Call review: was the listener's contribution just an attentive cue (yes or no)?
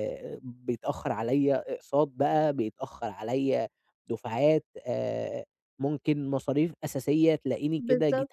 yes